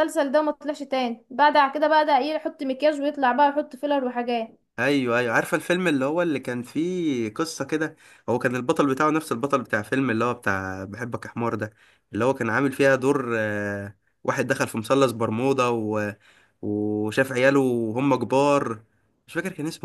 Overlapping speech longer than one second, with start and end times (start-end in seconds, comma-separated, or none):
none